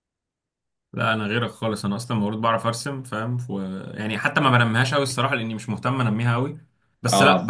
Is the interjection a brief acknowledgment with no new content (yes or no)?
yes